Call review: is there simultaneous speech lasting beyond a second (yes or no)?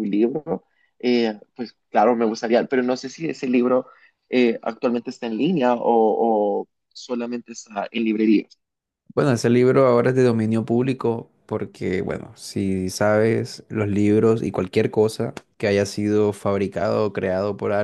no